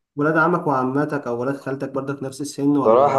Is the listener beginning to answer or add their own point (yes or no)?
yes